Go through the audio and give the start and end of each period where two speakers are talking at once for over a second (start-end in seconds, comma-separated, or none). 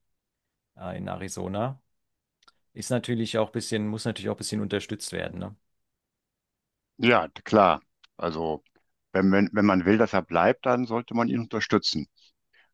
none